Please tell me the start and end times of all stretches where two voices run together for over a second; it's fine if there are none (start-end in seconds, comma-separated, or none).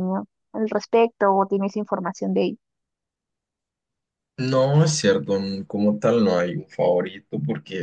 none